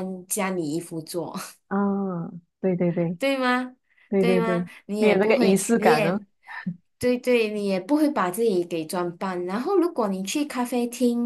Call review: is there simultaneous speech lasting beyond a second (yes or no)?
yes